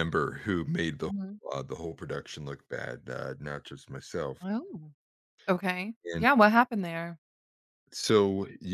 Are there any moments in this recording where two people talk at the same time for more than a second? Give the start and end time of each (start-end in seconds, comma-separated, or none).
none